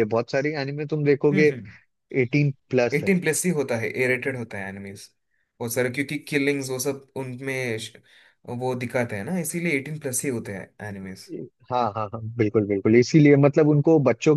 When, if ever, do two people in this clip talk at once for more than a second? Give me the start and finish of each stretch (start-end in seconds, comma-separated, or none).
none